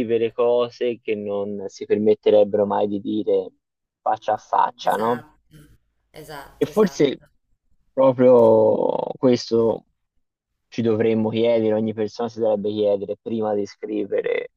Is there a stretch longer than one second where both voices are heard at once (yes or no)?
no